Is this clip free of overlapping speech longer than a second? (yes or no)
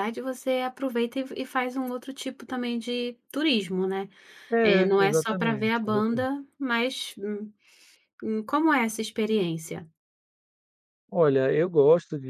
no